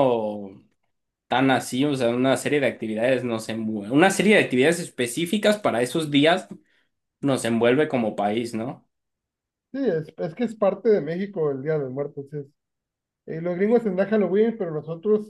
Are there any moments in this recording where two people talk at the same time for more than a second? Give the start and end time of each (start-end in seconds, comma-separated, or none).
none